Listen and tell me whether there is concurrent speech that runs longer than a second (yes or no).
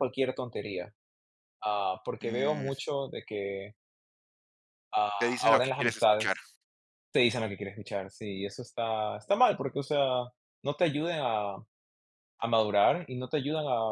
yes